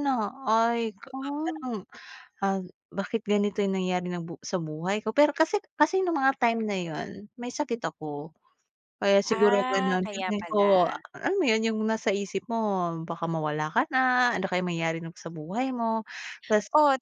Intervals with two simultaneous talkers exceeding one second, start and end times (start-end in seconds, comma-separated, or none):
9.3-11.0